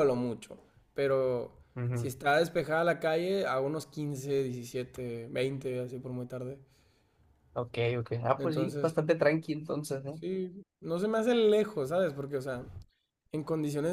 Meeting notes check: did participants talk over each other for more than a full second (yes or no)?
no